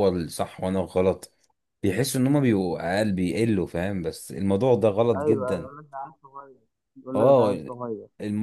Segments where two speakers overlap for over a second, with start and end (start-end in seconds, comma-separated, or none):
none